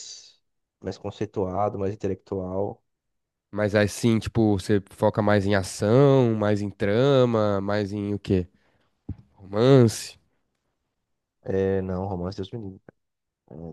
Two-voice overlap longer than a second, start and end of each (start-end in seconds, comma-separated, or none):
none